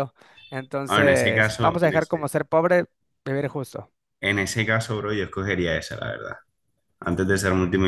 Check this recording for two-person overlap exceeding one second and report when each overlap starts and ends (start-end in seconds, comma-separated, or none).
0.8-2.3